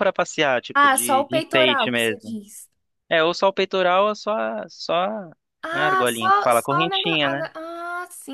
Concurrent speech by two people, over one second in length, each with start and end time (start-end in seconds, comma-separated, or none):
0.8-2.4, 5.7-7.2